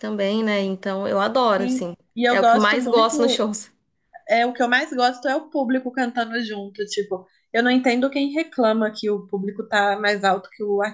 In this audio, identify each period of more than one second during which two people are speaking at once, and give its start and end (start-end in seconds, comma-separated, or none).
1.6-3.4